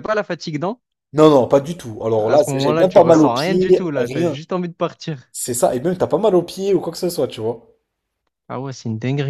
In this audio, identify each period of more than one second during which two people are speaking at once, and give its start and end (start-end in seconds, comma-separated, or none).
2.2-4.4